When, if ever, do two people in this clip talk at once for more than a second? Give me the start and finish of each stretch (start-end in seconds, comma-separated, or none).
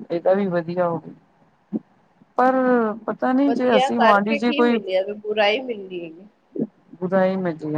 3.5-4.8